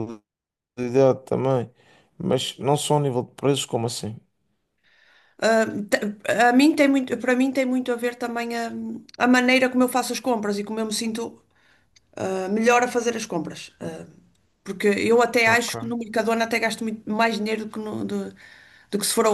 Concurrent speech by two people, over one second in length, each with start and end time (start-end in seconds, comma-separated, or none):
none